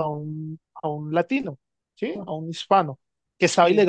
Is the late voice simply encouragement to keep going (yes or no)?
yes